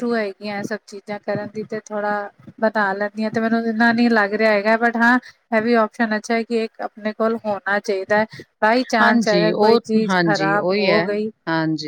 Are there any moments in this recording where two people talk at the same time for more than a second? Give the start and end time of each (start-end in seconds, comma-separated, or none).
9.0-11.0